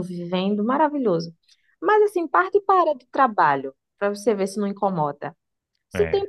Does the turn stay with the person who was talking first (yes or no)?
yes